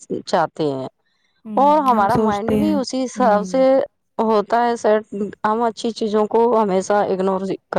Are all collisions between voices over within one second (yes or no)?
no